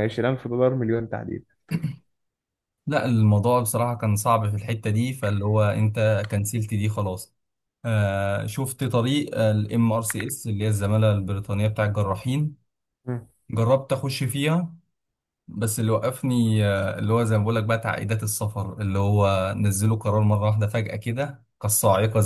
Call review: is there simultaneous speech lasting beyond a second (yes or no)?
no